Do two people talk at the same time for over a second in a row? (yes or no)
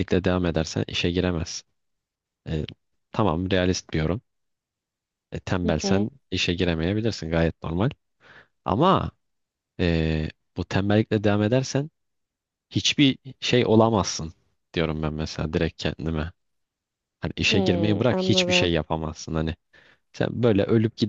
yes